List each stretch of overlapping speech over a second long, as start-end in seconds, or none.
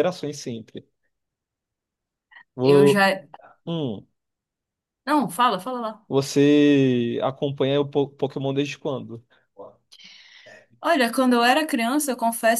none